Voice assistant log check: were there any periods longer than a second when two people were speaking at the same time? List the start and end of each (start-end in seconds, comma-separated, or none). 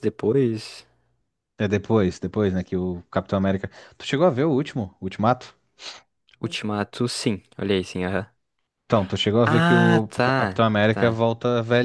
9.4-11.2